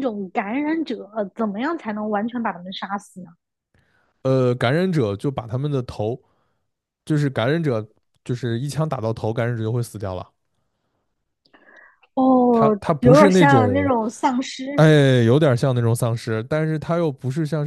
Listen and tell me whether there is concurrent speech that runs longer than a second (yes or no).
yes